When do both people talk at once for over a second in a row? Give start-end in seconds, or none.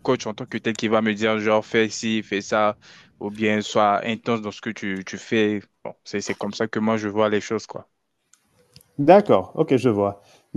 none